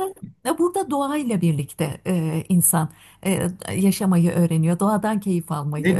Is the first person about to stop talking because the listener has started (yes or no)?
yes